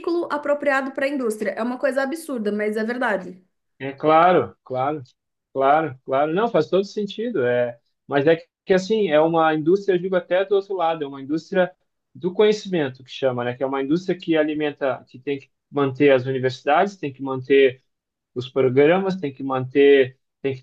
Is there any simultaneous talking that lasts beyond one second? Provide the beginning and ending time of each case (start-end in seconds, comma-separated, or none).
none